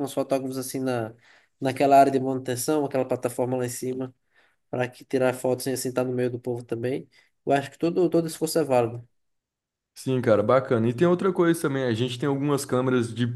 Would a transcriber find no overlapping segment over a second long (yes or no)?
yes